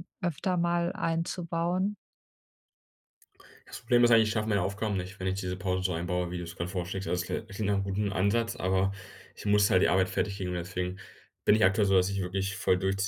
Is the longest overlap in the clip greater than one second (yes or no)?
no